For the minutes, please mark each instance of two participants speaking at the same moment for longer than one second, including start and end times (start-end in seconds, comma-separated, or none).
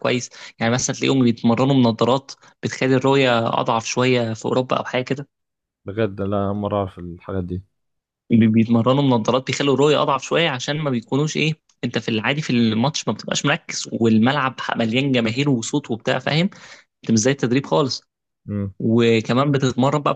none